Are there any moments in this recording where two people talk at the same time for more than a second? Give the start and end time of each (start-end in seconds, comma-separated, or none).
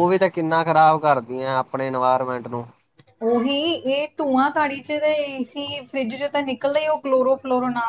none